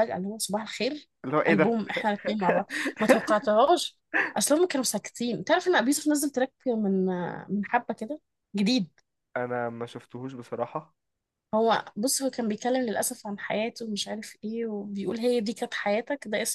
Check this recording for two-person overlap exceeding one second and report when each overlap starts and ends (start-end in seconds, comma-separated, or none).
none